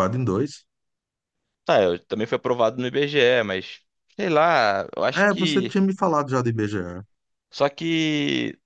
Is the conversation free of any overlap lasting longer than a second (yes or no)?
yes